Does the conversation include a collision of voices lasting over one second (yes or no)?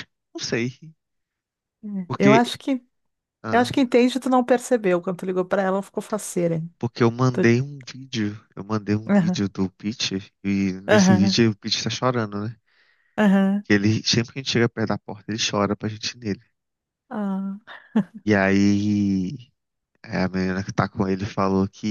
no